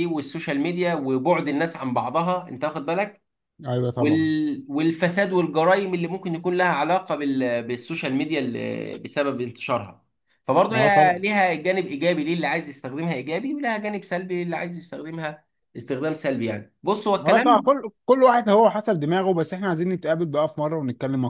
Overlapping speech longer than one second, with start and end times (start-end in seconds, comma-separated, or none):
none